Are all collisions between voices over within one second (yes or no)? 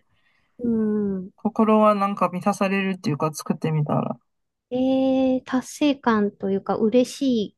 yes